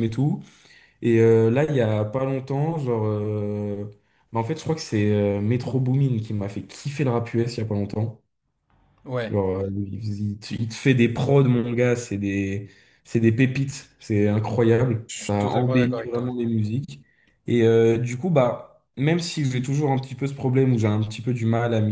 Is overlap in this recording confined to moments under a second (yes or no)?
no